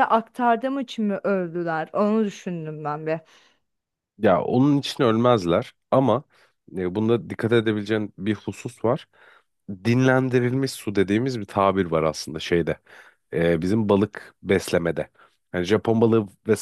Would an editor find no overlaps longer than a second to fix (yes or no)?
yes